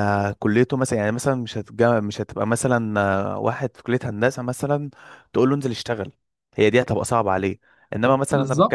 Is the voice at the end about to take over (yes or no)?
no